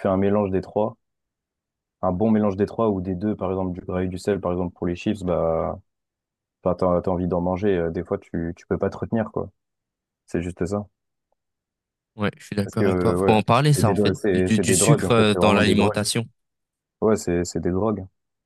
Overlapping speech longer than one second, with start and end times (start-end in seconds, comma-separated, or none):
12.6-16.1